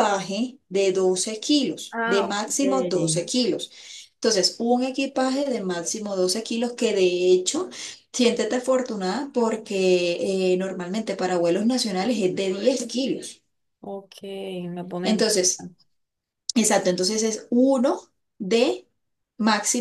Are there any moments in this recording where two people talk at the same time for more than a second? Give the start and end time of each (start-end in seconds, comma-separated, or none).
1.9-3.2